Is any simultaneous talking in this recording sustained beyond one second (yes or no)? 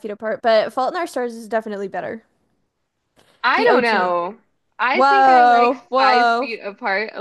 yes